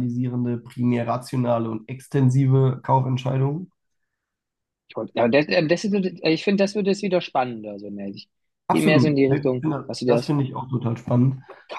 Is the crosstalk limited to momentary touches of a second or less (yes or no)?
no